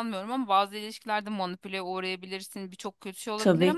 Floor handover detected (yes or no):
no